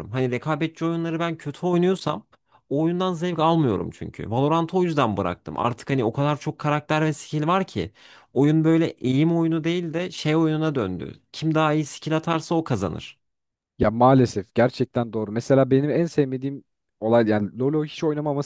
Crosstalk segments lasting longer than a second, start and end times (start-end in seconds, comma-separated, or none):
none